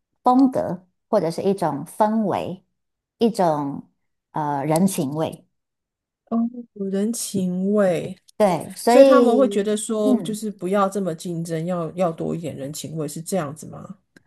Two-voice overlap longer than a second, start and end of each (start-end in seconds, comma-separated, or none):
8.9-10.4